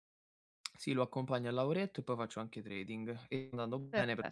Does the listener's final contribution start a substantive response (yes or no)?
no